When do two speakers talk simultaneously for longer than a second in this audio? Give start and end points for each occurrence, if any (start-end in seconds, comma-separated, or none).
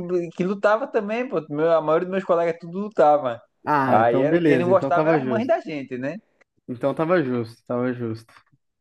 3.9-5.5